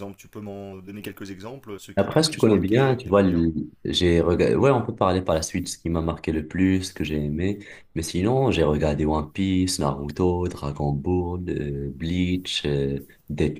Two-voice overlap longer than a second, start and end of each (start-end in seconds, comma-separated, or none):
2.0-3.5